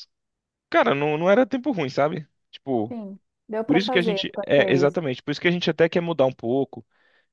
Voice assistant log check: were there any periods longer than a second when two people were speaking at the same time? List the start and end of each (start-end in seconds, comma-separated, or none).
3.6-5.0